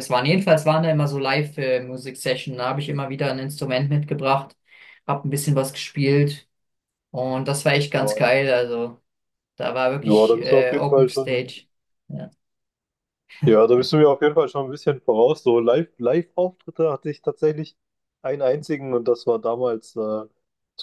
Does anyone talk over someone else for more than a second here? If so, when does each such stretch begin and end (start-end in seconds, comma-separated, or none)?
10.0-11.6